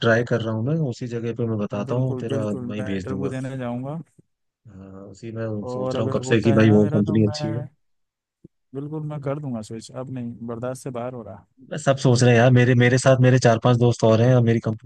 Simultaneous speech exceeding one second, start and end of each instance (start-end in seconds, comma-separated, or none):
1.7-3.3, 5.7-7.7